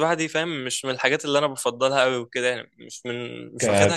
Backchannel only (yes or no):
yes